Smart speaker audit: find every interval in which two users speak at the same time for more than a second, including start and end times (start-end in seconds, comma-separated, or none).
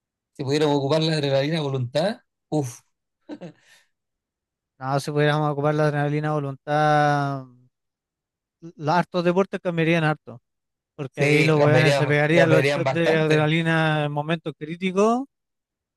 11.1-13.5